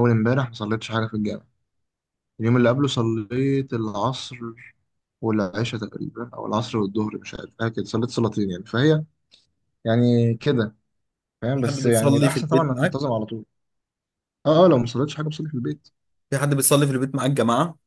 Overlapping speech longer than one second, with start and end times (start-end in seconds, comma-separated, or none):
11.5-13.0